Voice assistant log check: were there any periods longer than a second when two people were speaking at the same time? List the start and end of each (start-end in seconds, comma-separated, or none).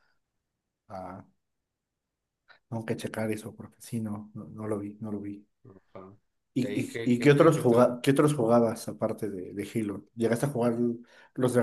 6.6-8.0